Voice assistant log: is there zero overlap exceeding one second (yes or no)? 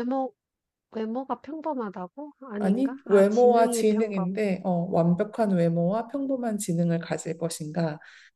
no